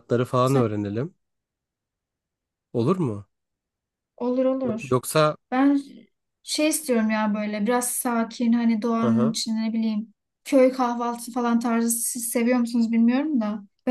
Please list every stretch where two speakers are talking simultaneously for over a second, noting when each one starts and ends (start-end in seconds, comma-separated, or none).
none